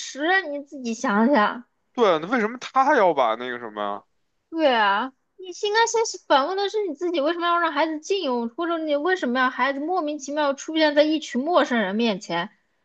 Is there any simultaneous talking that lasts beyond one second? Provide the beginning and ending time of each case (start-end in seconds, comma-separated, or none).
none